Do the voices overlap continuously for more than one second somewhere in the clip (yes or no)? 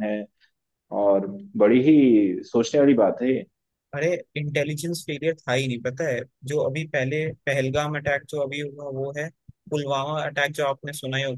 no